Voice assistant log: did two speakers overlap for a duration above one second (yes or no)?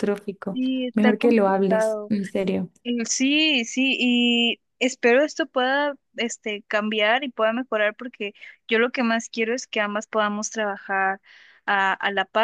yes